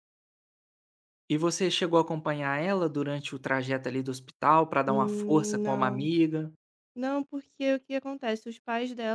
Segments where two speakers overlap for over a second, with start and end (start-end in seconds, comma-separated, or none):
4.8-6.1